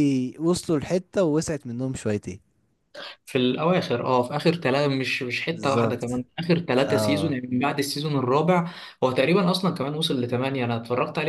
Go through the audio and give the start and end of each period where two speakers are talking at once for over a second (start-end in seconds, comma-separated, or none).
none